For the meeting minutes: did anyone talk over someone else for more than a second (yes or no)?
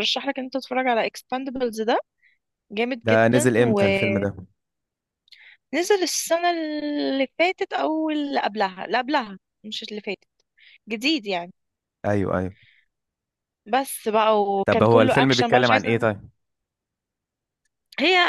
yes